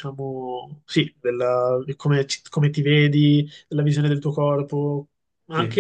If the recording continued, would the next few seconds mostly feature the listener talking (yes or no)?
no